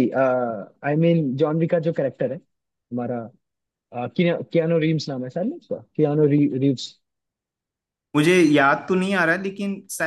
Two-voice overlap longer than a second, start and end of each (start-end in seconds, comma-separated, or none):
none